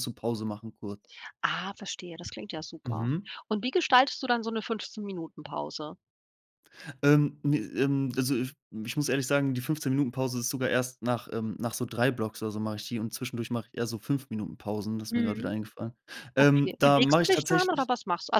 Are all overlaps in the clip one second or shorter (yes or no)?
no